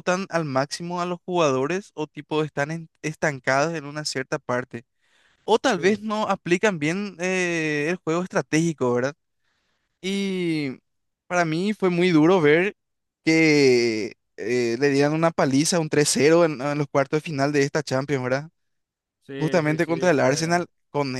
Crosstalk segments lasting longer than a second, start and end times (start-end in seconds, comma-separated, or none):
19.4-20.6